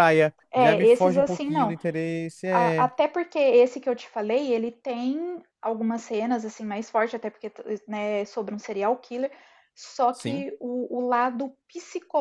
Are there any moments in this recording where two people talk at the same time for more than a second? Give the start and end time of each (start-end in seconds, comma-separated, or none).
0.5-1.8